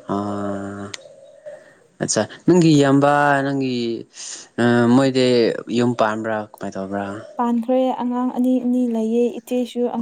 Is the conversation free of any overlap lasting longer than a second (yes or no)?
yes